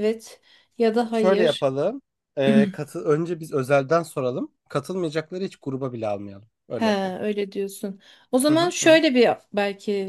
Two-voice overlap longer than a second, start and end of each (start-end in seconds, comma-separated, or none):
none